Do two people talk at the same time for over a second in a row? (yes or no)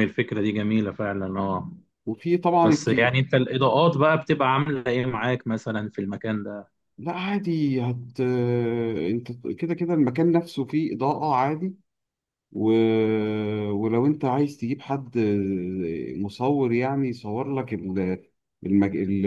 no